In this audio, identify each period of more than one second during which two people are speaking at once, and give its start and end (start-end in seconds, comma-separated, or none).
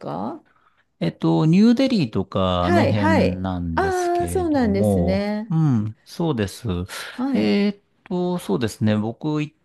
2.6-5.6